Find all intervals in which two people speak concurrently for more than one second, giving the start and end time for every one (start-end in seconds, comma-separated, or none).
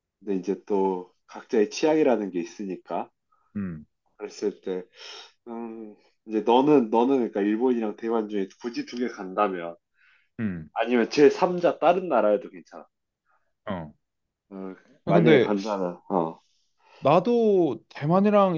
none